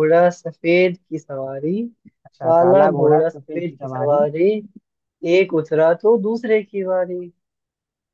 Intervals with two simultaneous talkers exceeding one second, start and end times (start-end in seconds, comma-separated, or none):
2.4-4.2